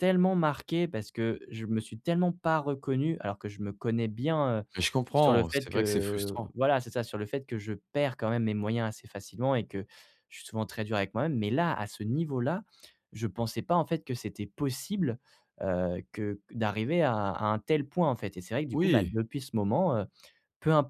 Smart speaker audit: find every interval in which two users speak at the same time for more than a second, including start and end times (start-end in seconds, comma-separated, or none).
5.1-6.5